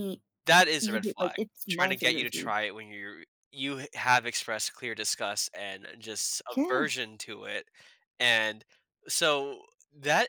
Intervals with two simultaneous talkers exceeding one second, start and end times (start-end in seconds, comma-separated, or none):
0.8-2.5